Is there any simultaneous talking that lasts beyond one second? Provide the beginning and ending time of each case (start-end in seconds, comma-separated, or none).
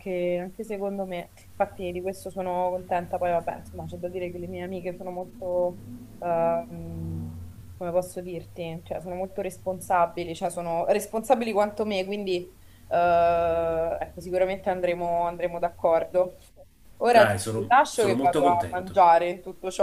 17.1-19.0